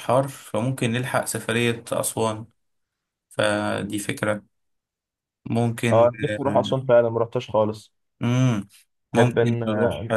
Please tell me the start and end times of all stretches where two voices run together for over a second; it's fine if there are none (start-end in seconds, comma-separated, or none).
none